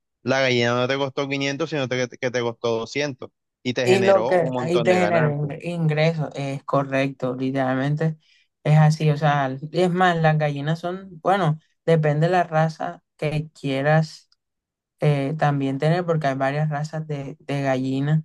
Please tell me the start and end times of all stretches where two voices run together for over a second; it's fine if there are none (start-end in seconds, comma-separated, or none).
3.9-5.5